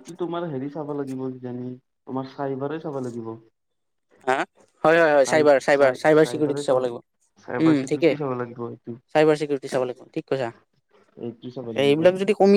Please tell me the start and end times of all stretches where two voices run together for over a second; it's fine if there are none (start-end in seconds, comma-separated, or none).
5.3-7.0